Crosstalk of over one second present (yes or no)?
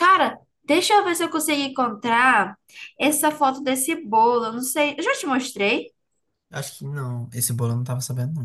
no